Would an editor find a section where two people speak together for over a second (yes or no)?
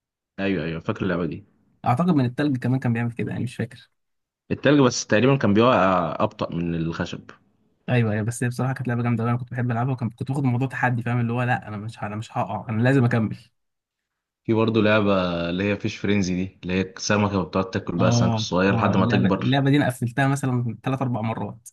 yes